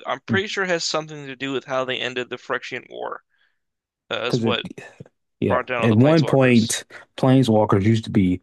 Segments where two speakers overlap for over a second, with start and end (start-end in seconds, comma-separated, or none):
5.5-6.8